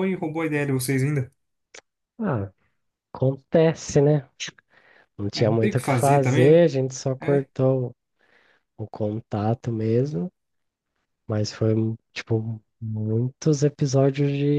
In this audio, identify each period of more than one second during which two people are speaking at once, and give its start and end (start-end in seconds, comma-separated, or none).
5.3-6.6